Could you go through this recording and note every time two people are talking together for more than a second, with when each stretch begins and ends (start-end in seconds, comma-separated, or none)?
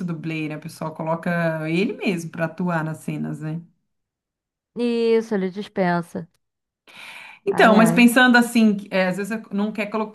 none